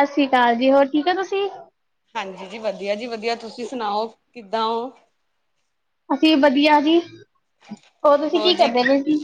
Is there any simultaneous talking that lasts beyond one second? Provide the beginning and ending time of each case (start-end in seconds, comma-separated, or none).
none